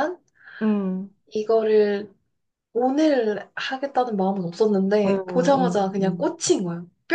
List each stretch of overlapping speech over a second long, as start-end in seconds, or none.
5.0-6.4